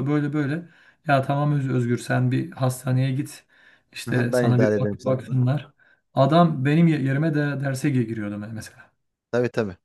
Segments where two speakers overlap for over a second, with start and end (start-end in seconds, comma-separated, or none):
4.1-5.4